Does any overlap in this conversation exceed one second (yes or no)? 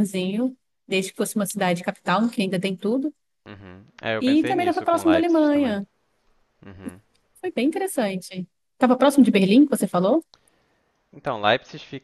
yes